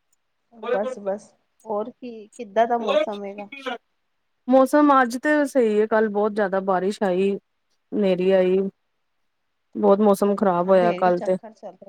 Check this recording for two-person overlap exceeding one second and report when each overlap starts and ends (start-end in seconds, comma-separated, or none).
10.1-11.4